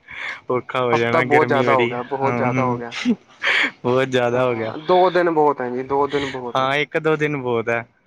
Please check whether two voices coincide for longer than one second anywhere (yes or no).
yes